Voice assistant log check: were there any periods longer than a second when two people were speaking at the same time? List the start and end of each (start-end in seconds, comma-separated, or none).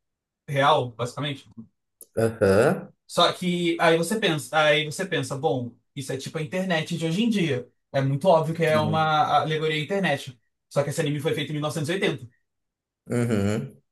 none